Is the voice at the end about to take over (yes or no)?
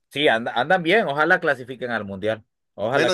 yes